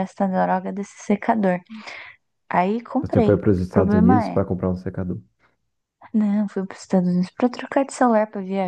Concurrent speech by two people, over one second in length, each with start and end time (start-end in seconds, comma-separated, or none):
3.0-4.4